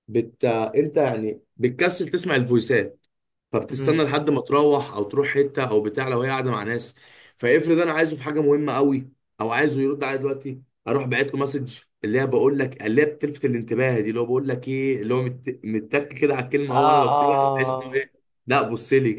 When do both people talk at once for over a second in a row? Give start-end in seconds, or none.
16.7-18.1